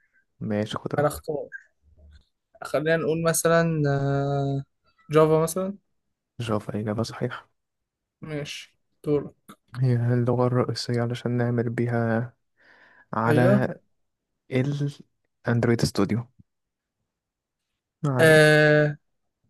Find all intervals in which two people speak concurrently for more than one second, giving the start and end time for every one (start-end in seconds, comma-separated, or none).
none